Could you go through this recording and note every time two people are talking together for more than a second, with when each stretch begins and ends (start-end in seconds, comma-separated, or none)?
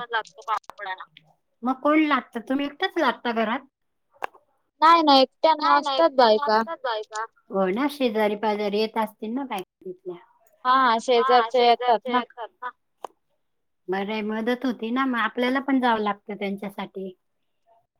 none